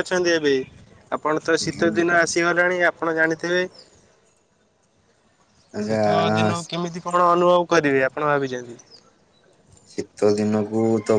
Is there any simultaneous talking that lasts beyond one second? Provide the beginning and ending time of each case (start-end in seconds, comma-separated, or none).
none